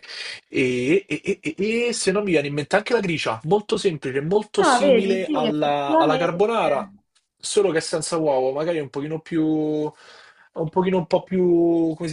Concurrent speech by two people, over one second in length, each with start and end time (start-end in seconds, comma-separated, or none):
4.6-6.5